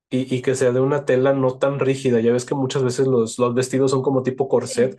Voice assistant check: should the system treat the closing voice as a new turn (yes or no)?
no